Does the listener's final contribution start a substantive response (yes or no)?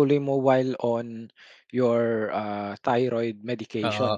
yes